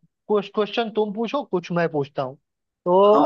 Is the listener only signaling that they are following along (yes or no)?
no